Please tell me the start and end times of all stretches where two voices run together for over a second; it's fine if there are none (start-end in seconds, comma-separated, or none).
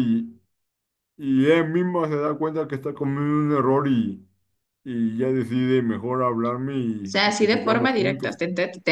7.0-8.4